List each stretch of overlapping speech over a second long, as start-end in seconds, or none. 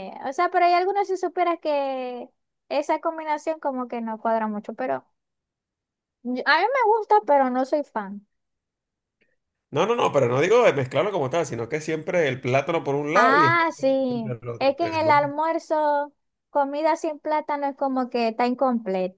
13.1-15.1